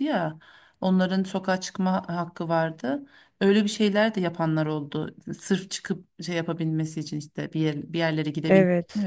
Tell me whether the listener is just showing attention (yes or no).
no